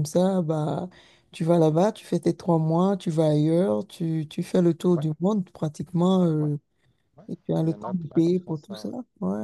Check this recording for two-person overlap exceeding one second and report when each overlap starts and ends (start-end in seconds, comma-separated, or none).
7.6-8.9